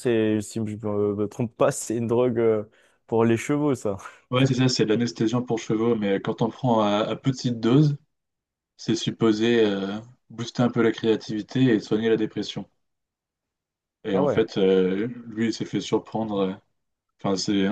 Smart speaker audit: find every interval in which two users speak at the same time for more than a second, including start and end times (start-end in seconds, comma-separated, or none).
none